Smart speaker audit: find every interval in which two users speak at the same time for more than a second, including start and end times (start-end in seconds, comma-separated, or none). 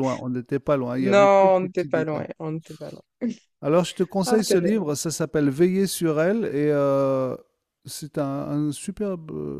1.0-2.2